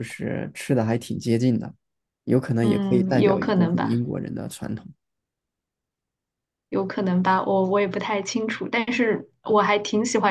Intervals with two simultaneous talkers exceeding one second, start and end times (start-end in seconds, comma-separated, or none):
2.6-4.0